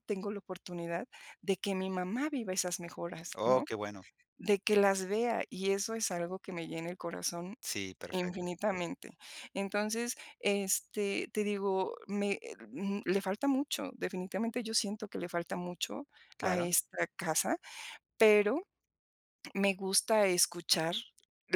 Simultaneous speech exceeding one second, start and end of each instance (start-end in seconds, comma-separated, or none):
none